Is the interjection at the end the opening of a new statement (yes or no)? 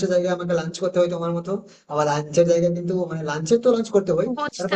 yes